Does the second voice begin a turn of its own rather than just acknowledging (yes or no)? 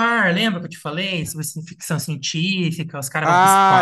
yes